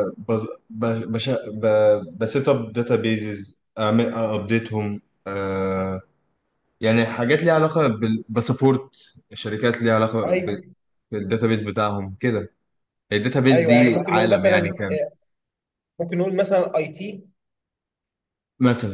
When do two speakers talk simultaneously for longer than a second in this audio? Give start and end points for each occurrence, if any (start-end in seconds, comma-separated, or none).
13.5-15.0